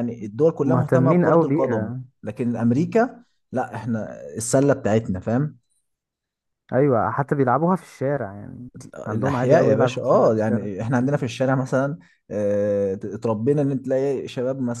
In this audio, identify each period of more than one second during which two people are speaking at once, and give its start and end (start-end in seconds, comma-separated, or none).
0.6-2.0, 9.1-10.7